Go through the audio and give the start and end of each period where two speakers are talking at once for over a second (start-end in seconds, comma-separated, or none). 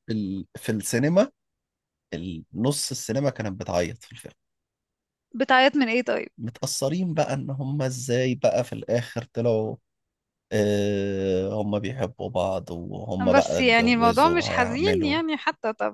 13.4-15.2